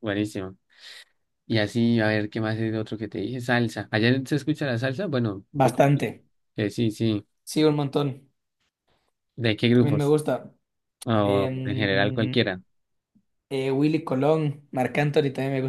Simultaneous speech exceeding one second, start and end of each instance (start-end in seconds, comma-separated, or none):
11.2-12.5